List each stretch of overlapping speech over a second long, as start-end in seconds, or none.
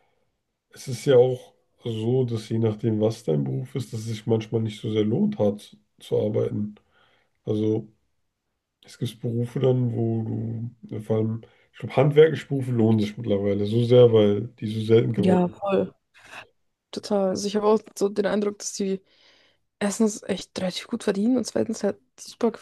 none